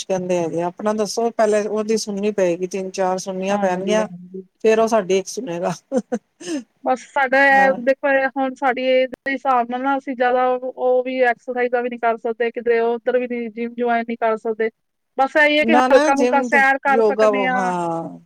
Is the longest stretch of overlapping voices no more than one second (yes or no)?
no